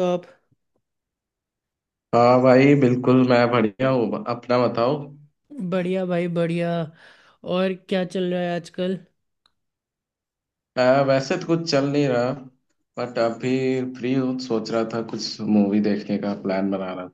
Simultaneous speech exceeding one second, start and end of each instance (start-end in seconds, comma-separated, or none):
none